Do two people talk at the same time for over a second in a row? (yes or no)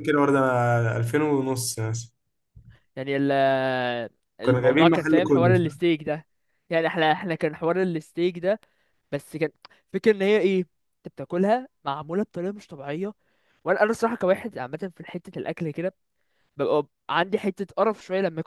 yes